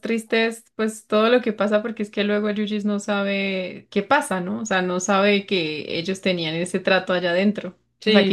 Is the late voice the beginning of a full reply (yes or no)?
yes